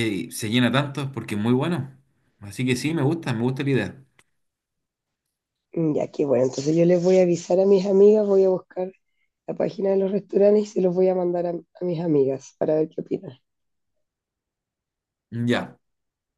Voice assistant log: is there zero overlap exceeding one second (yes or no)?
yes